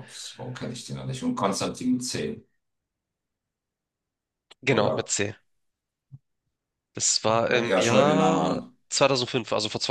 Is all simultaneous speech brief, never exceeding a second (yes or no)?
no